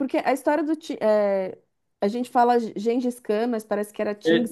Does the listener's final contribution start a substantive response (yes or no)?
yes